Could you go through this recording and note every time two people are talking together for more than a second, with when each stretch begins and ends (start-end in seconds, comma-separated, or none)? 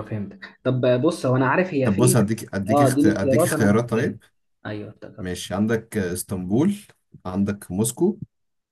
1.8-4.2